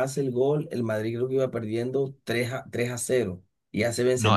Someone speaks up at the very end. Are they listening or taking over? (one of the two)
taking over